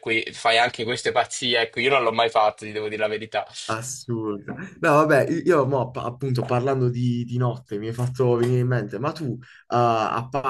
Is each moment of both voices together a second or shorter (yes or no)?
yes